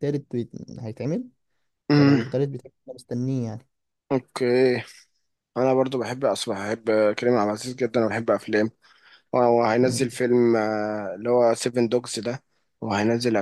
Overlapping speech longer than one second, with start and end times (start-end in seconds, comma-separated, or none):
none